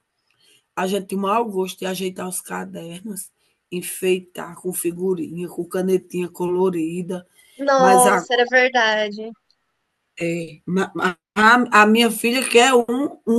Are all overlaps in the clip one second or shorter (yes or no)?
yes